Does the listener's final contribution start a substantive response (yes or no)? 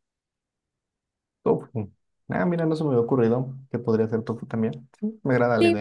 yes